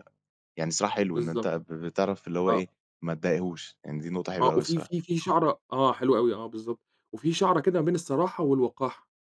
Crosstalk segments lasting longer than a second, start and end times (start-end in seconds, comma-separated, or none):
none